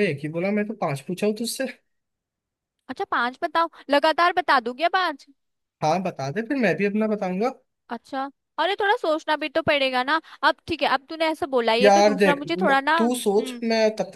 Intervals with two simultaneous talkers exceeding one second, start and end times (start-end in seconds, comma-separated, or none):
11.8-13.6